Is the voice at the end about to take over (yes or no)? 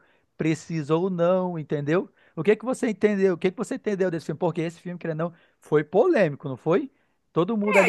yes